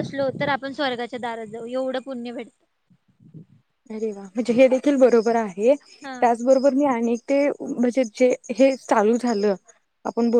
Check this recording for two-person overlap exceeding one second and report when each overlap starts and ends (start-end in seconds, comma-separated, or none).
none